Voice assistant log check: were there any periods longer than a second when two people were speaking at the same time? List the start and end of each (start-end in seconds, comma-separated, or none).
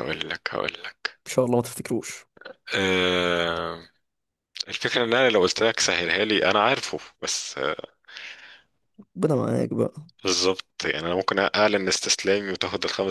none